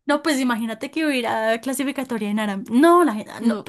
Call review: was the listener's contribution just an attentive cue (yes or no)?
yes